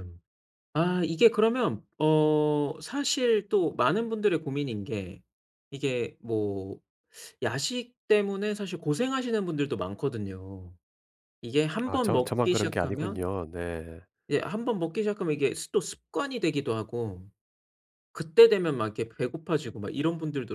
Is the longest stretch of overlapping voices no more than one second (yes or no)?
no